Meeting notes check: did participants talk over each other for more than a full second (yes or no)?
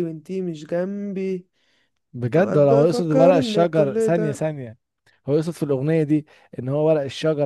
yes